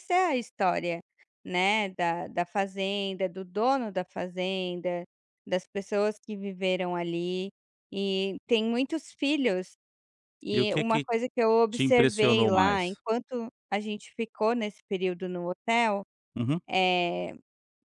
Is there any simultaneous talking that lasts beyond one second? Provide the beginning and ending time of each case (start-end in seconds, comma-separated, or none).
11.7-13.0